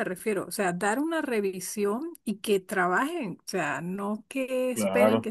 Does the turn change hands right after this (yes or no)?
no